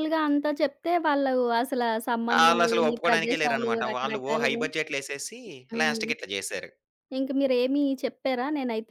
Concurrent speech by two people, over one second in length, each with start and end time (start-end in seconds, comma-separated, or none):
2.4-4.6